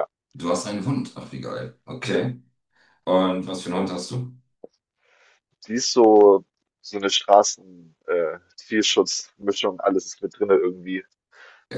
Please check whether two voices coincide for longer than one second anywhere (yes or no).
no